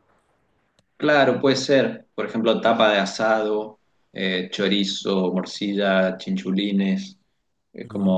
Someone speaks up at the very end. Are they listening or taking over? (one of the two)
listening